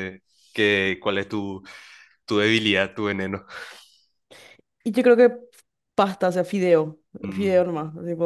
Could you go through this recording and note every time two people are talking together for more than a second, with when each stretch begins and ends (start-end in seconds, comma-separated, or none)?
none